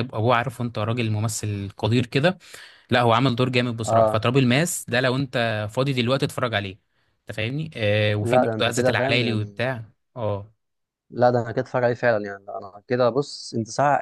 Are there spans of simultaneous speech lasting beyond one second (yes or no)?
yes